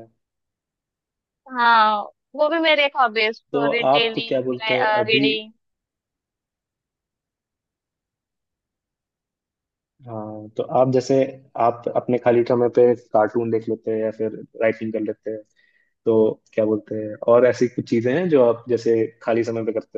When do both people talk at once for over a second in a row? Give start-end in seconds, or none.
3.5-5.2